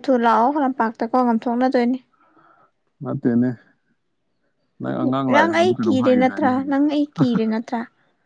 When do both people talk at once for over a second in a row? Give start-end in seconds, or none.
5.3-6.9